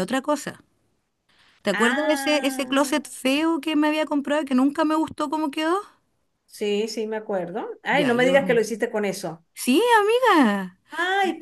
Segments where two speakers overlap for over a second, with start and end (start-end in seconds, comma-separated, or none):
1.7-3.0